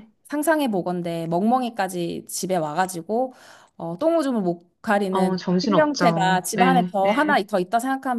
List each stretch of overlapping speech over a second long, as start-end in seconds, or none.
5.1-7.4